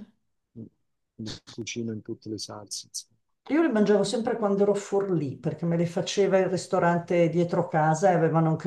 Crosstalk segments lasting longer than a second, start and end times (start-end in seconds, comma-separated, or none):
none